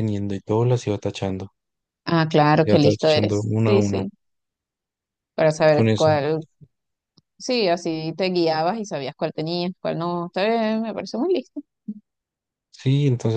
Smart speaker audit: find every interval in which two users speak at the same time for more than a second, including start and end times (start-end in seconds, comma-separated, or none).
2.7-4.0